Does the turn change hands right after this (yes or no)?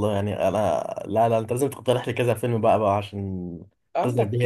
yes